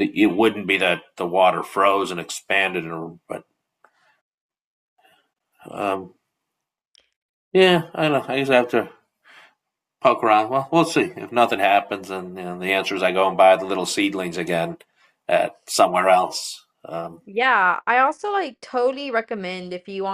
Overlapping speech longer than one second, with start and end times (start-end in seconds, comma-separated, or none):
none